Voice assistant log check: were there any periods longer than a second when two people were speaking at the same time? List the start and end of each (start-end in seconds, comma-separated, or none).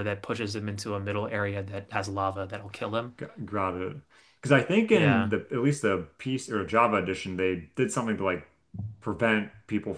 none